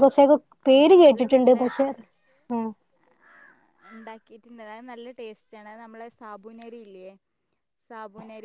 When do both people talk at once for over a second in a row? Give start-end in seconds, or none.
none